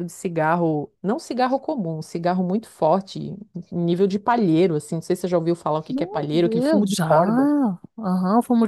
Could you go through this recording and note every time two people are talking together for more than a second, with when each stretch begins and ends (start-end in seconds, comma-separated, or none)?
5.9-7.1